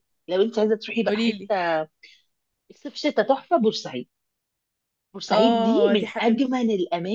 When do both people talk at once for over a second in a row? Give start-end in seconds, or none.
5.3-6.6